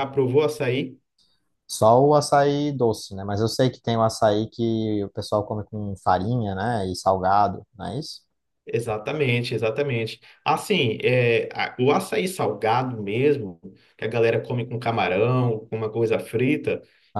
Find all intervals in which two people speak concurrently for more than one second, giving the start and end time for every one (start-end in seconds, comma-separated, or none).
none